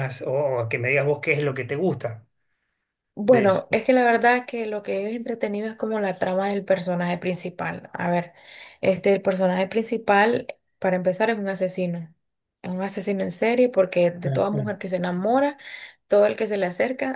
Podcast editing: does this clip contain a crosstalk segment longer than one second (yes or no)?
no